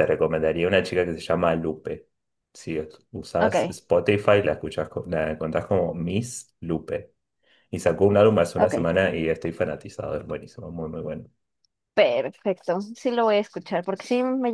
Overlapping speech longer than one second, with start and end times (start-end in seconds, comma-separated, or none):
none